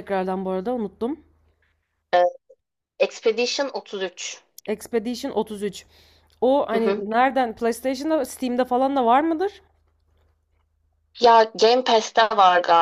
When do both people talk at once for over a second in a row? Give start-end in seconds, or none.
none